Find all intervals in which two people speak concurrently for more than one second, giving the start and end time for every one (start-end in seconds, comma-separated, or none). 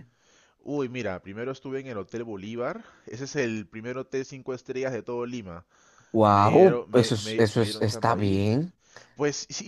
6.3-8.4